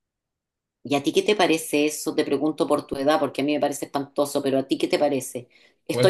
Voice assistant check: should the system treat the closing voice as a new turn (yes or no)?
no